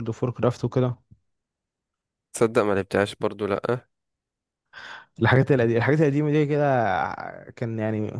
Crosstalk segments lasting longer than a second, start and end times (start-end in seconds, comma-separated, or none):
none